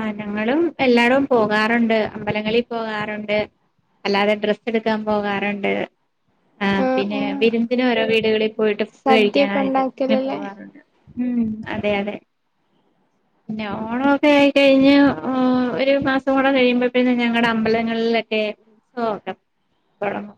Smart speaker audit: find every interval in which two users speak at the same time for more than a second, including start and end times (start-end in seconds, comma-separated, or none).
9.0-10.4